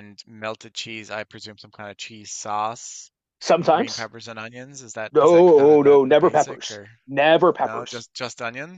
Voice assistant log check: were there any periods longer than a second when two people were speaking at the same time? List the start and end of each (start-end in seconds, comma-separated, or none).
5.1-6.9